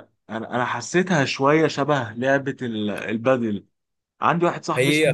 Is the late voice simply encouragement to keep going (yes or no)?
no